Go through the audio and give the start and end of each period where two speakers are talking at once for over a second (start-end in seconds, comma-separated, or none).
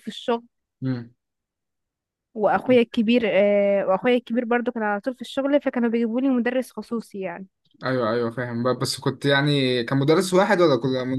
none